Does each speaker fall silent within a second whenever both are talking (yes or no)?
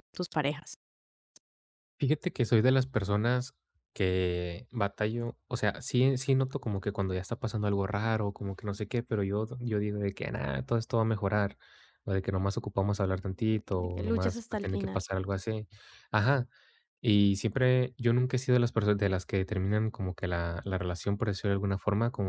no